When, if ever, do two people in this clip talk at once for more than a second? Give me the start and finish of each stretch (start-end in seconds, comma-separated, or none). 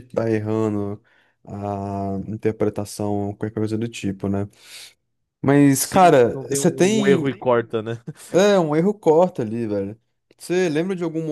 5.8-7.3